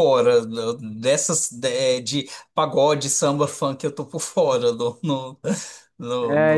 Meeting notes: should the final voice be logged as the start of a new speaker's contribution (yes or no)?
yes